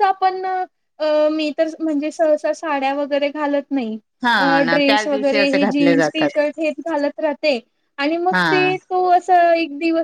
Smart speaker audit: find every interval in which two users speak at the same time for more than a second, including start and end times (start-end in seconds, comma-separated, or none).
4.4-6.4